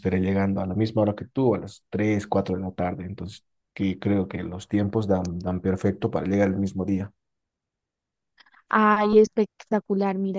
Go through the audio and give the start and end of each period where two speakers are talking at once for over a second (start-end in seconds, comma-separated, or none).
none